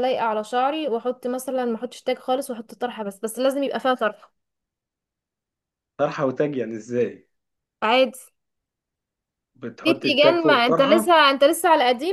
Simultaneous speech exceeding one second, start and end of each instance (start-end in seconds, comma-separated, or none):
9.8-11.2